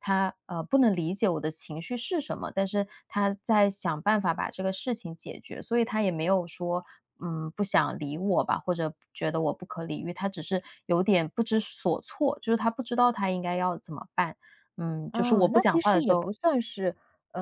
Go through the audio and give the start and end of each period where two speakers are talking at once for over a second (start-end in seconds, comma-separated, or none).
15.1-16.3